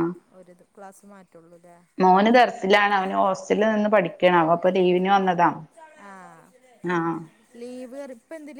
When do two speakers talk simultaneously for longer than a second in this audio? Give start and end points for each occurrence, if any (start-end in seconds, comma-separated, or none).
none